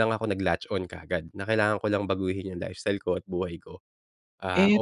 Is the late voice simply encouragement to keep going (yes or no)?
no